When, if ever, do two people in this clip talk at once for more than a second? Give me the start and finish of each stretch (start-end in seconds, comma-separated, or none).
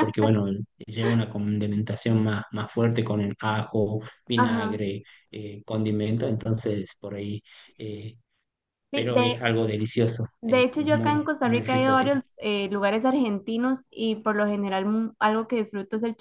10.4-12.2